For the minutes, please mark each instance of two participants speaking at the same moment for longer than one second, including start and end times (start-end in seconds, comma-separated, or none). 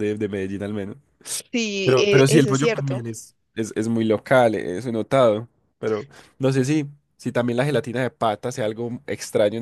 1.8-3.0